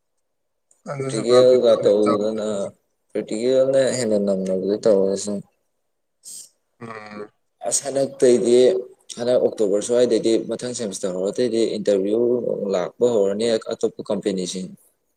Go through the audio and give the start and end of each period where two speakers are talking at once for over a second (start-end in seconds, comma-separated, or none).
1.0-2.5